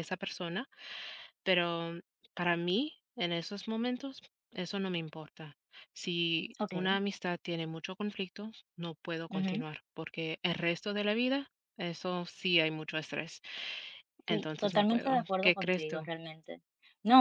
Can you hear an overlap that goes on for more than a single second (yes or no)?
yes